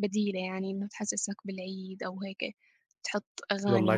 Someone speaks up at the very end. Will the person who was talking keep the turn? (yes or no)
yes